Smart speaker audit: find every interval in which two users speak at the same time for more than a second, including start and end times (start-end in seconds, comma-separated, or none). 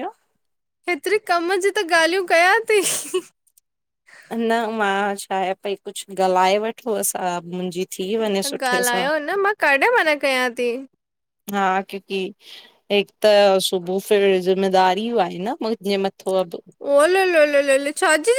none